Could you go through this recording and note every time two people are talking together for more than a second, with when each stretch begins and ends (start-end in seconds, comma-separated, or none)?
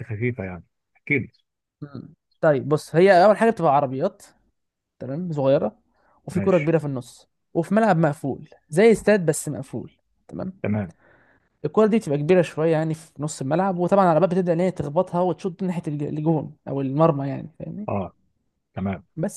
none